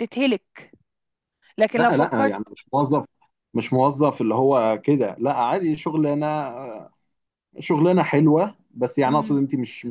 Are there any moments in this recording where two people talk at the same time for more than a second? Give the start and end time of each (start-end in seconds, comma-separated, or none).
none